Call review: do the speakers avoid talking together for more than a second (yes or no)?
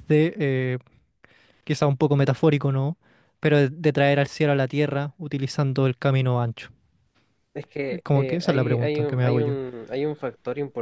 no